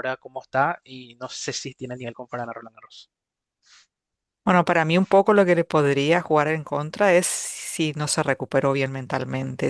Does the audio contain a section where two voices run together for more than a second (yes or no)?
no